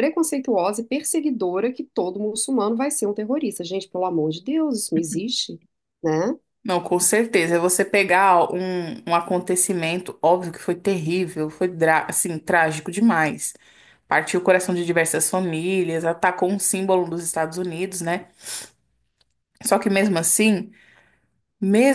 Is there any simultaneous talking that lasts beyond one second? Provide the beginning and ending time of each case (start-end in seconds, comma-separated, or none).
none